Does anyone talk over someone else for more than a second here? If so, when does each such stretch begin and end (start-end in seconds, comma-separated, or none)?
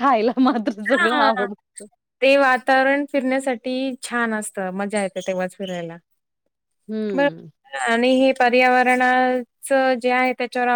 none